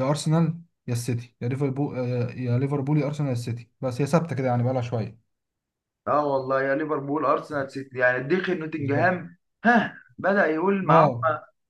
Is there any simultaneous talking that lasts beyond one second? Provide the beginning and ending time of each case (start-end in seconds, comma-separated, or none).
none